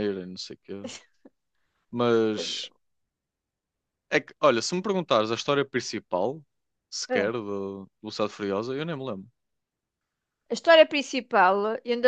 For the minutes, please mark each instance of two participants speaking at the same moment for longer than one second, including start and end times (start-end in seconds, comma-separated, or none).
none